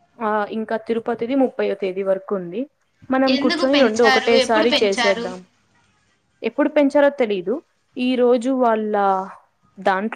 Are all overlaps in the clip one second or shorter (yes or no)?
no